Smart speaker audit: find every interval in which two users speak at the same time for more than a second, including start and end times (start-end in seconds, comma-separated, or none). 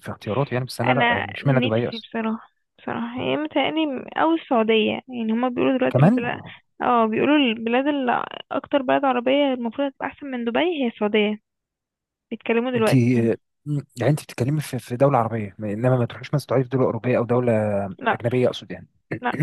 0.8-2.1